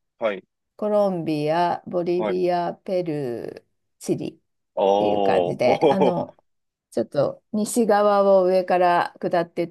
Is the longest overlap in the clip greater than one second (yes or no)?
yes